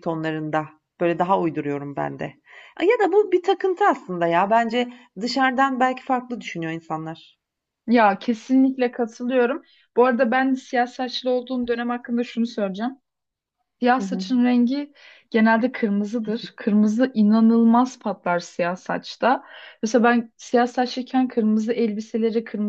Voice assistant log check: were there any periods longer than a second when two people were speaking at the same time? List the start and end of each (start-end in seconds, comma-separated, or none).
none